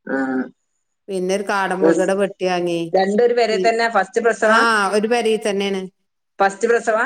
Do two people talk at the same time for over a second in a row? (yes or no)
no